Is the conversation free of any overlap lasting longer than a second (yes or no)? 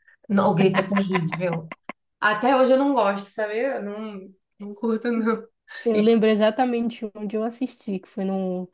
yes